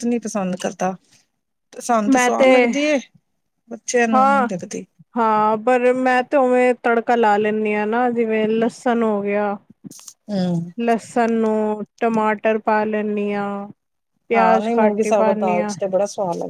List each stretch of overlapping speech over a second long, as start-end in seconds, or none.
14.3-15.7